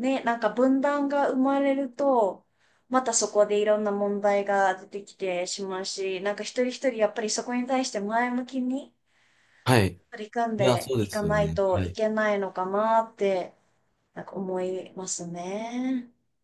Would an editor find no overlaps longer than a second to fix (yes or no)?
no